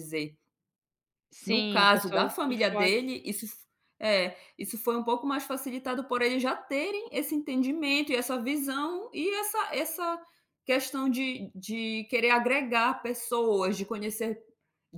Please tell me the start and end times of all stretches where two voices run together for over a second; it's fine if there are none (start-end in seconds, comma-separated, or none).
1.4-2.9